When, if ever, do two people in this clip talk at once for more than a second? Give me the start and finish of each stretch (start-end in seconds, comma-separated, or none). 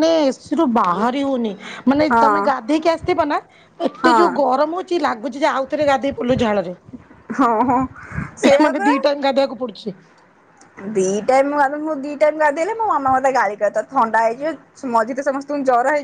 none